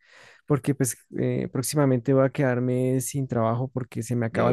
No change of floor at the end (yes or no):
yes